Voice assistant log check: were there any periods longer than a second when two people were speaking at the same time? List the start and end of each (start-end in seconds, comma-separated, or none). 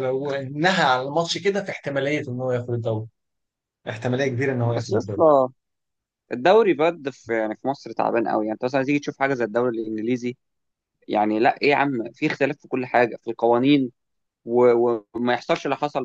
none